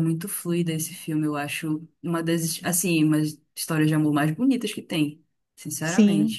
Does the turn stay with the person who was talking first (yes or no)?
no